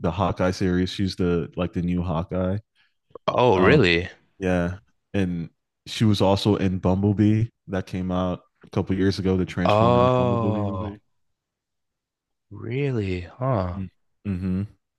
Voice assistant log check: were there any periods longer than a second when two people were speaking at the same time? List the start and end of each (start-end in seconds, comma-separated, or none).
9.7-11.0